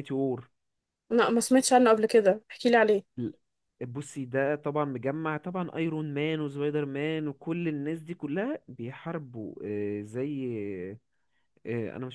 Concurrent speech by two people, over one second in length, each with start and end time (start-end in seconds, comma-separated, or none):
none